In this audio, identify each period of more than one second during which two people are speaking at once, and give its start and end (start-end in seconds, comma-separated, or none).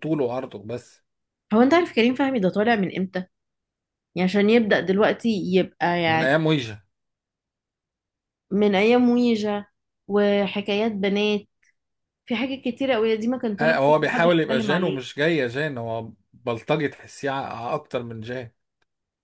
13.6-15.0